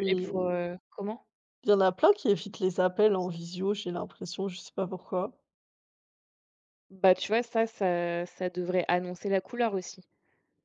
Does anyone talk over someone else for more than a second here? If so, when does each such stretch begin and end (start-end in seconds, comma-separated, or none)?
none